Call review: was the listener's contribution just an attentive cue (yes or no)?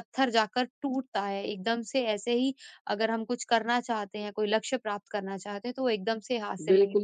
no